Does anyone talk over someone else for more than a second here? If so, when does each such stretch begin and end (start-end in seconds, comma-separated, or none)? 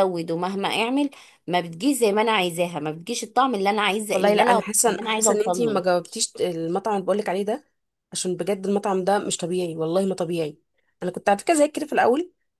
4.1-5.8